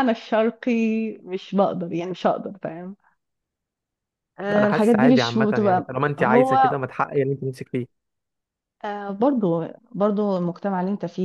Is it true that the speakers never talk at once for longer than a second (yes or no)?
no